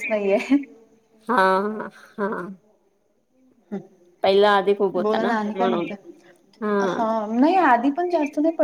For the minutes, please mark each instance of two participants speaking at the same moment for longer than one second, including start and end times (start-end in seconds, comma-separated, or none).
4.2-5.8